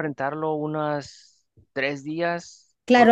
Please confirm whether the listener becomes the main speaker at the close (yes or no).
yes